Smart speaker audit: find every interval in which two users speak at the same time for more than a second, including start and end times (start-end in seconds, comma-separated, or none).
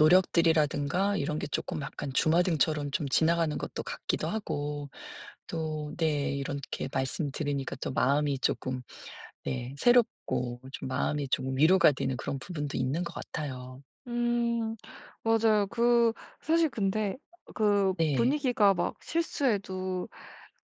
none